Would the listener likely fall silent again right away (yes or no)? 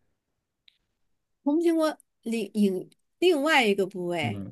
no